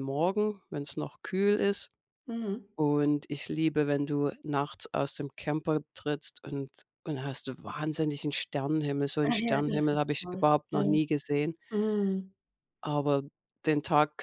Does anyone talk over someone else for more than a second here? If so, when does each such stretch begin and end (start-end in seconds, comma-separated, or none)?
9.2-11.0